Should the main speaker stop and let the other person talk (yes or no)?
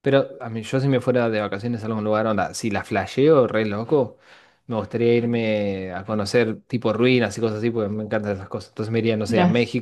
no